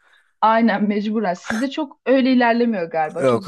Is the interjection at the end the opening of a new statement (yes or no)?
yes